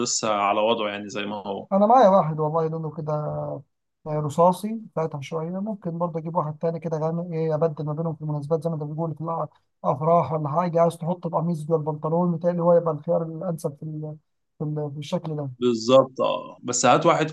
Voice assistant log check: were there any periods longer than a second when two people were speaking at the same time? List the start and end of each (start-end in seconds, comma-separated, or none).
none